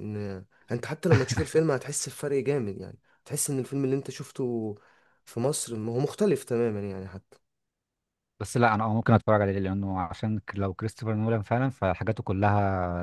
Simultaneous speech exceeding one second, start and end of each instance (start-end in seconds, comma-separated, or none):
none